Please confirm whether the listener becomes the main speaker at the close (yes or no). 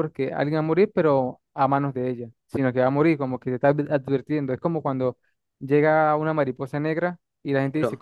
no